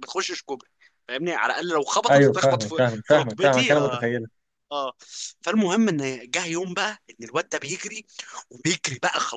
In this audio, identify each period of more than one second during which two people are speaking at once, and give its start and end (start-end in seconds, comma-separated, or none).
2.1-4.1